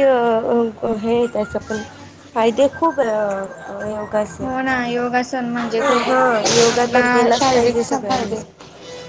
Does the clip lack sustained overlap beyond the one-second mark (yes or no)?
no